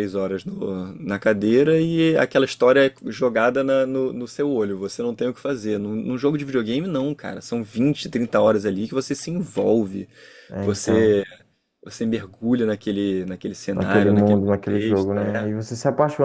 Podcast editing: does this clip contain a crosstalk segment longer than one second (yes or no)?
yes